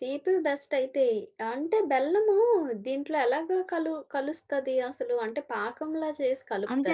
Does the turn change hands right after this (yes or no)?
yes